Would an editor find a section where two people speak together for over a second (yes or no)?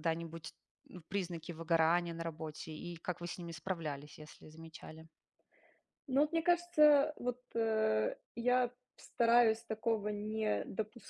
no